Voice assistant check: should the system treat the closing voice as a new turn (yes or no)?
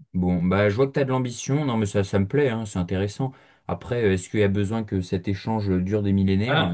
yes